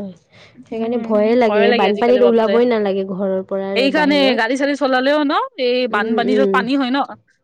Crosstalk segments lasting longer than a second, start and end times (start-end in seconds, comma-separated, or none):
none